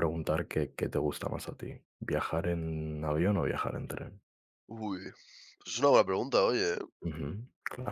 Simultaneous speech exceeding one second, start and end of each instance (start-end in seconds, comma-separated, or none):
none